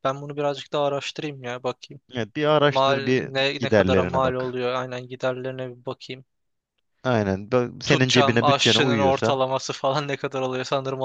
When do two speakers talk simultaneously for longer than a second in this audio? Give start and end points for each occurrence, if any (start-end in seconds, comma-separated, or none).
2.7-4.5, 7.8-9.4